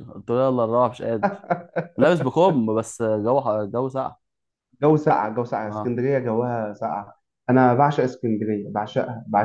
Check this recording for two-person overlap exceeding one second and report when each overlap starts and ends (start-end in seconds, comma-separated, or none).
none